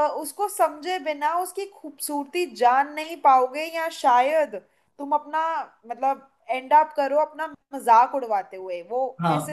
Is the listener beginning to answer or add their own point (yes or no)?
yes